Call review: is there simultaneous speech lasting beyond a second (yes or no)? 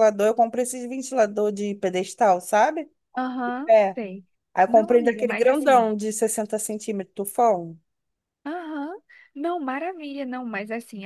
yes